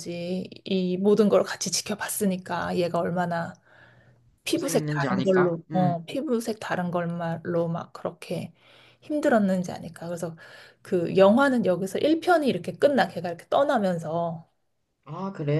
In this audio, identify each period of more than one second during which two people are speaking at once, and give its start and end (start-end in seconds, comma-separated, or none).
4.5-6.0